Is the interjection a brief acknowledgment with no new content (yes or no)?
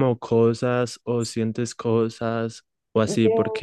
yes